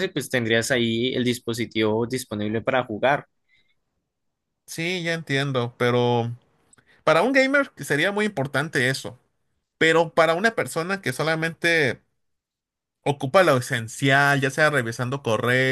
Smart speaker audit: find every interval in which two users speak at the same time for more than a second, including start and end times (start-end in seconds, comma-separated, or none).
none